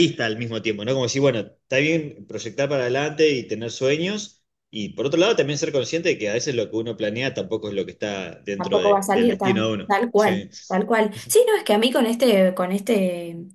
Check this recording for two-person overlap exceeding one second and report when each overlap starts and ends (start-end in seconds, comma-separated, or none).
8.6-10.5